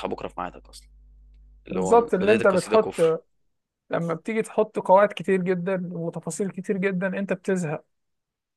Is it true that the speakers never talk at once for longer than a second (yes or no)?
no